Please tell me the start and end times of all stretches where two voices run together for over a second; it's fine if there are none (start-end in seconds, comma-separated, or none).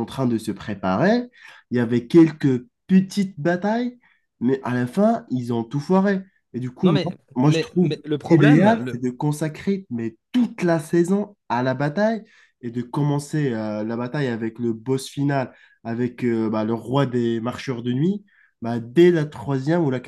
6.8-9.0